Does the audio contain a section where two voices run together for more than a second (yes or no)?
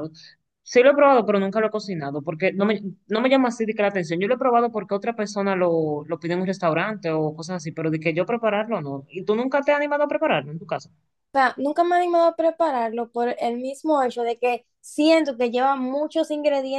no